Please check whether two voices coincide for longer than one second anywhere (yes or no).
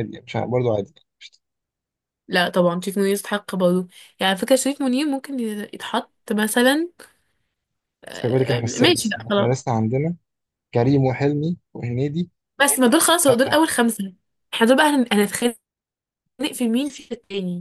yes